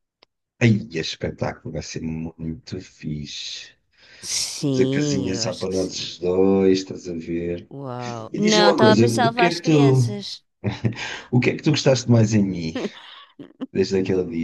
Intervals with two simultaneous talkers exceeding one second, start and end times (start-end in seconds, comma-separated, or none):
4.6-6.2, 8.3-10.2